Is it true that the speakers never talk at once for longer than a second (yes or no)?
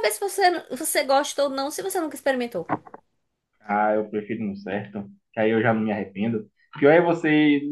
yes